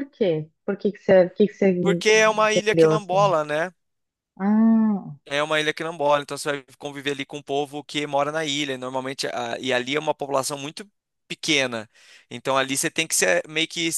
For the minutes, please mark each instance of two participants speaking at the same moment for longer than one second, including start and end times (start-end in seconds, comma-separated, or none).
2.1-3.3